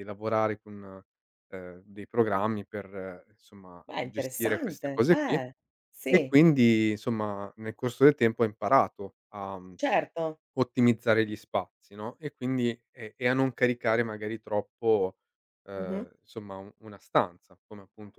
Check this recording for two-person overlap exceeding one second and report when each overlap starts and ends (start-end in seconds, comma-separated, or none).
3.9-5.4